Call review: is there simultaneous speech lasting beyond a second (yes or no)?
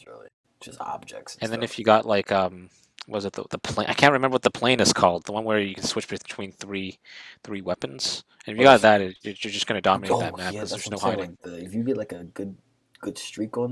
yes